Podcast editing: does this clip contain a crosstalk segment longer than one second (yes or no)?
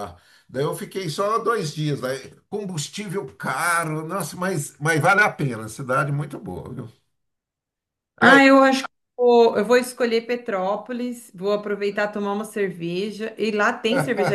no